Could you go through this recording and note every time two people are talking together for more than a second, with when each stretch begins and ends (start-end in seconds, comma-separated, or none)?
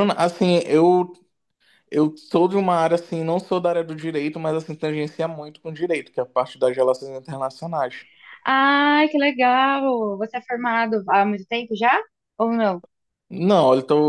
none